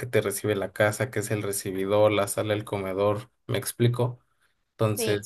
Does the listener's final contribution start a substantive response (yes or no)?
yes